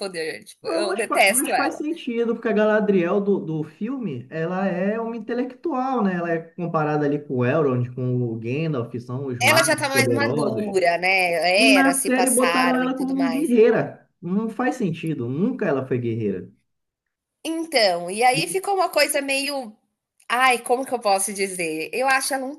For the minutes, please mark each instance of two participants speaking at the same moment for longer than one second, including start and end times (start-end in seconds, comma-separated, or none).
0.6-1.8, 9.4-10.8, 11.6-13.5